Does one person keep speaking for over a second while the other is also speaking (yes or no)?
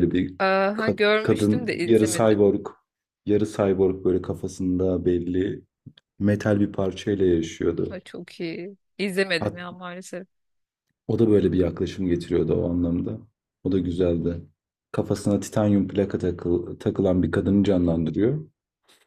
yes